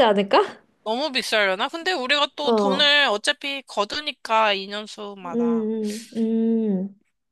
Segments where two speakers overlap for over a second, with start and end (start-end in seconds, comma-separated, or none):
none